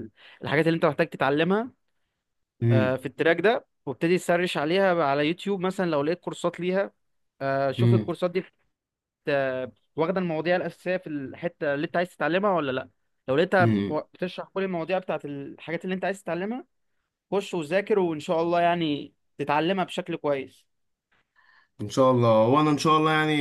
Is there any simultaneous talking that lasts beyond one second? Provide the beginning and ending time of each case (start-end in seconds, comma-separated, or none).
none